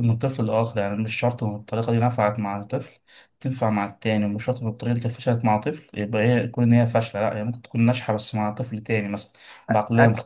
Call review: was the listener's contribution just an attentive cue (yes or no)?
no